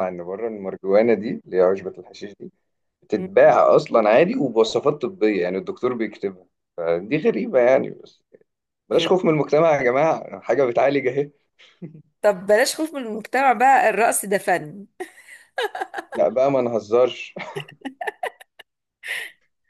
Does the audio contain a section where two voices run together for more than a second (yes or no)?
no